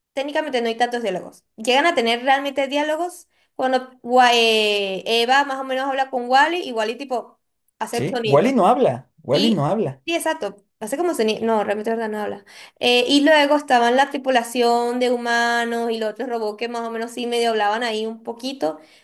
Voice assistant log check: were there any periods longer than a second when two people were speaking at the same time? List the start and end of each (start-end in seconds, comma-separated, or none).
none